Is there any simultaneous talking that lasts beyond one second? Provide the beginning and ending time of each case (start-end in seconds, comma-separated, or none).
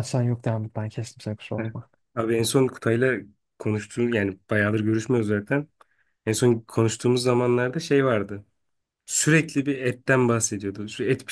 none